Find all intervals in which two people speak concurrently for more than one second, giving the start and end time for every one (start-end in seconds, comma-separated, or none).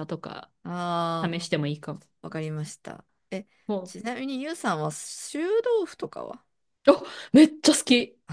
none